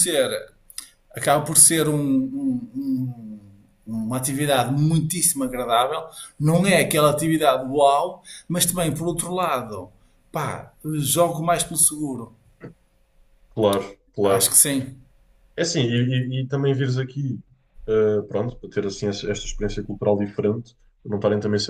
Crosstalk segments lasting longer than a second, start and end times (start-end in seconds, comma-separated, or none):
none